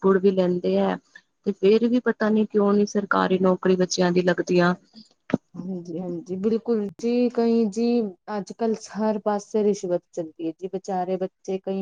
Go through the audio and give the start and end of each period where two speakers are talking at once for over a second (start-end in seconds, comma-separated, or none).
none